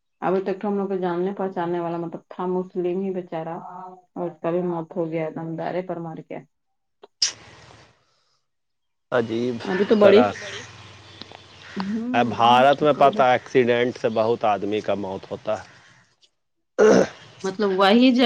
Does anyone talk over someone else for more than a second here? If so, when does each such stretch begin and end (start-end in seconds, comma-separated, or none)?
none